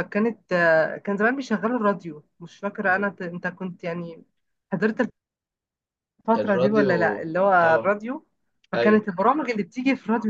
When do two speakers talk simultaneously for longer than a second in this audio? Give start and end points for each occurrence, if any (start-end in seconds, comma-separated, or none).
6.4-7.9